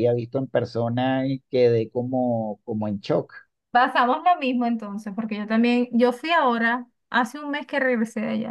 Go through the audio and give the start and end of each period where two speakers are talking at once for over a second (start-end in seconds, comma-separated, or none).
none